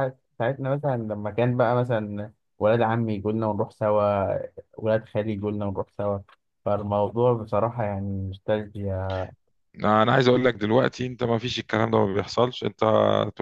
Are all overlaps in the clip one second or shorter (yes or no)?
yes